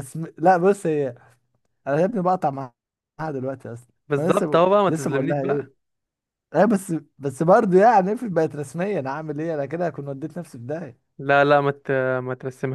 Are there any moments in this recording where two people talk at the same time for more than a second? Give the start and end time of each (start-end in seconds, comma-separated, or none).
4.1-5.7